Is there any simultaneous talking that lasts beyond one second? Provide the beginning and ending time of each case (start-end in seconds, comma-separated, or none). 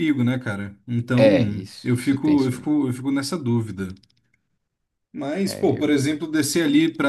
1.2-2.7